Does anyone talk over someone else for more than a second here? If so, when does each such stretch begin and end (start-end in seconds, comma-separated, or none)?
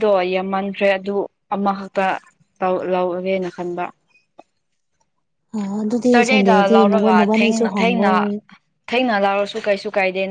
6.1-8.1